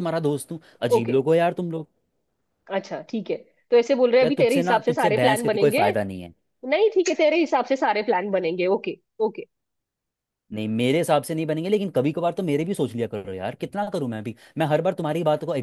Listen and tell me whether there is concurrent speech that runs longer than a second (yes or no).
yes